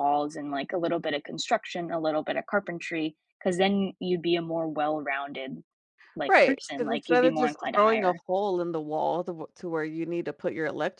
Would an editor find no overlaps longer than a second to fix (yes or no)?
no